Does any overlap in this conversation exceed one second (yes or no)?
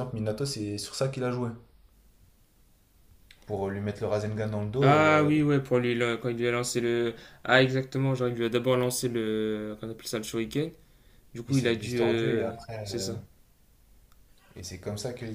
yes